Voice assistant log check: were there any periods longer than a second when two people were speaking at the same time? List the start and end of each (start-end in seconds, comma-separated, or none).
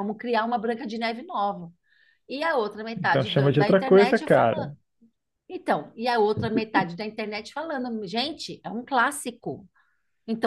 3.0-4.7